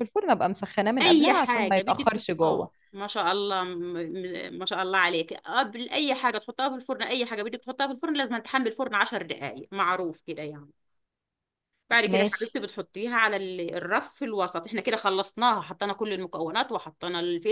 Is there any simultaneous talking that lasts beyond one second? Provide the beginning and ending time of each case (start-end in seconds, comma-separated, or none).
1.0-2.7